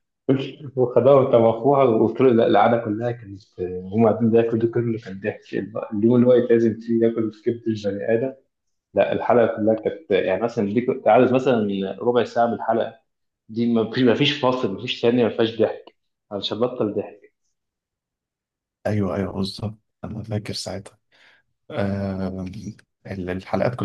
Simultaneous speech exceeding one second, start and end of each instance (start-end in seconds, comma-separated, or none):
none